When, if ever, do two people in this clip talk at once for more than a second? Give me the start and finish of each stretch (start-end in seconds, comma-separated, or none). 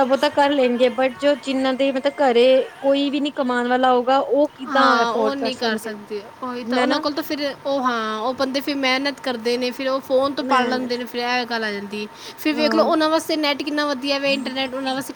none